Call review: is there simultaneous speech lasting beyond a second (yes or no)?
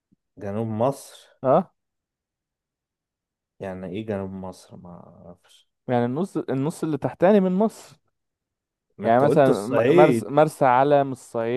yes